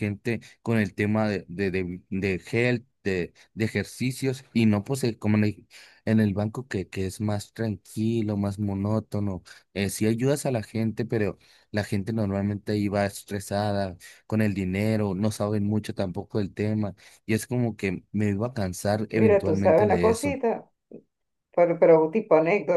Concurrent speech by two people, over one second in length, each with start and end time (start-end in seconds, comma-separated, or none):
19.1-20.4